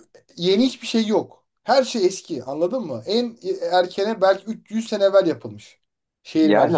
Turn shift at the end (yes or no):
yes